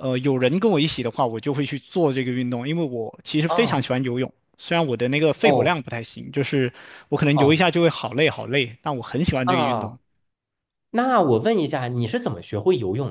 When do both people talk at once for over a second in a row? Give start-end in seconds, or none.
none